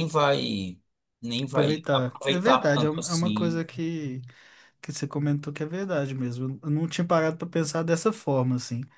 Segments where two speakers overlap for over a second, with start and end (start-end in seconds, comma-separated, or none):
1.5-3.6